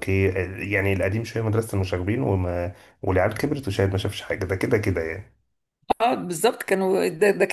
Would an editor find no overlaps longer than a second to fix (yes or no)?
yes